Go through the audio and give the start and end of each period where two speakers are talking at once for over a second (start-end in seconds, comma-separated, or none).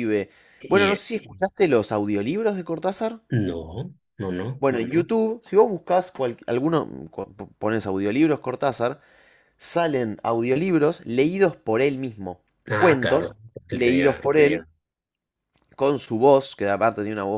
12.7-14.3